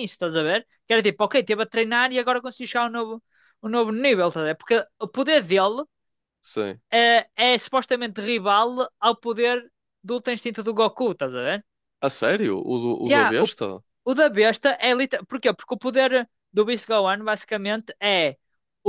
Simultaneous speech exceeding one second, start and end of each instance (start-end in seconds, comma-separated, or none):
none